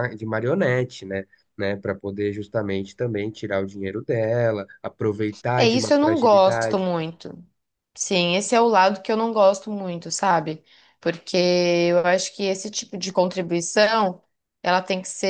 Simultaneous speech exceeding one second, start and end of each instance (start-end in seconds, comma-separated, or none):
5.6-6.9